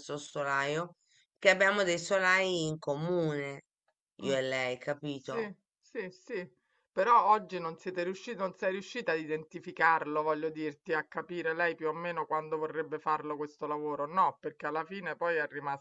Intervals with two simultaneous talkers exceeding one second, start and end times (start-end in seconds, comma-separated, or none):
none